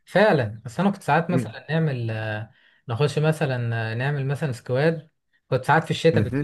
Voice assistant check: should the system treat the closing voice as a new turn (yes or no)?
no